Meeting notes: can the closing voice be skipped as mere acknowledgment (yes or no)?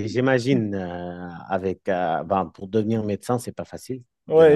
no